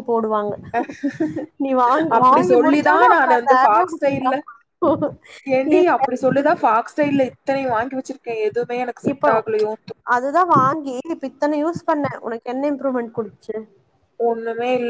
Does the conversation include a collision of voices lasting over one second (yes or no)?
yes